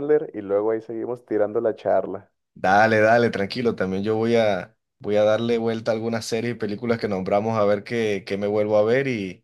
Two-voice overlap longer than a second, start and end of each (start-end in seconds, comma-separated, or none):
none